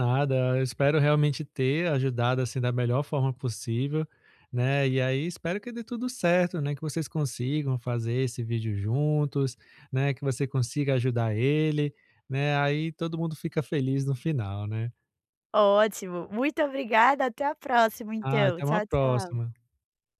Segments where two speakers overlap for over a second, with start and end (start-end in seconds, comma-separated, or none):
18.2-19.5